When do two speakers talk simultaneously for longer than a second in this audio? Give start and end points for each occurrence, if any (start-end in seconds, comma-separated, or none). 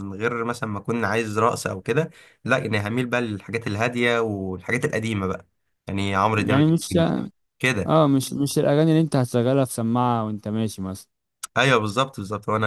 none